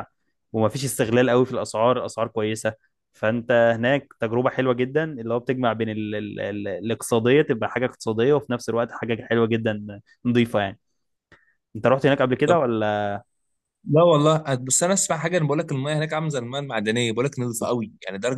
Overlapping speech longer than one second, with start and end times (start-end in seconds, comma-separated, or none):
none